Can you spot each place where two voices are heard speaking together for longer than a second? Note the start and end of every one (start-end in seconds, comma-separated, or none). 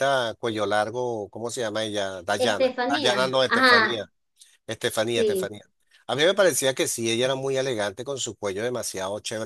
2.4-4.0